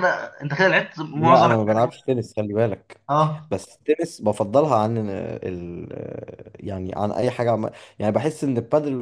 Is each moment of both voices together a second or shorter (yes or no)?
yes